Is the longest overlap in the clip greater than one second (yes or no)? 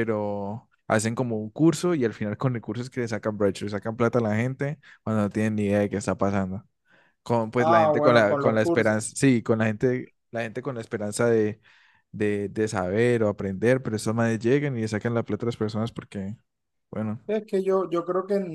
yes